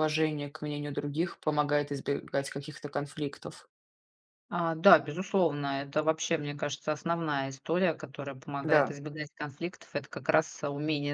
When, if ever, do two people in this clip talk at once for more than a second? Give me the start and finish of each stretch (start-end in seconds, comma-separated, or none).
none